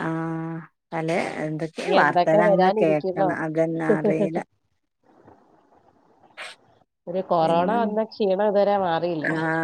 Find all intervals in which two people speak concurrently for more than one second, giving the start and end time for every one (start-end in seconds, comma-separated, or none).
1.8-3.3